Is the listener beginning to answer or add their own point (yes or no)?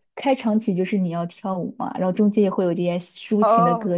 yes